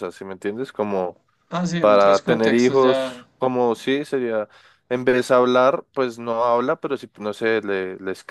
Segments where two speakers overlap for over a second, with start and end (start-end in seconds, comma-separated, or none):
1.8-3.2